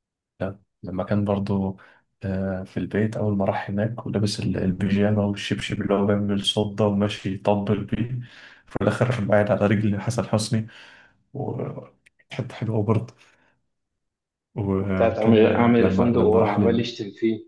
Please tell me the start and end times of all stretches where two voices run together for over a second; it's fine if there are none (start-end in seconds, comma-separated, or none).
14.8-16.8